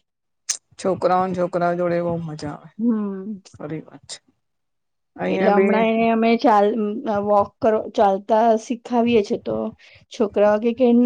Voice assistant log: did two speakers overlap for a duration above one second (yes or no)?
no